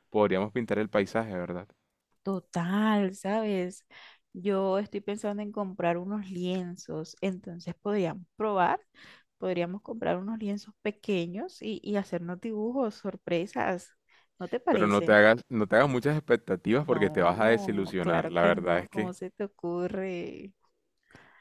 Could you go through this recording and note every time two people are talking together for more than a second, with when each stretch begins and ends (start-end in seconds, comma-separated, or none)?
16.8-19.1